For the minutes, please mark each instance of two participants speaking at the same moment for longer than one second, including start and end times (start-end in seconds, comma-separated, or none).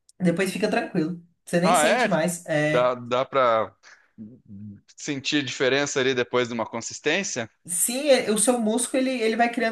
none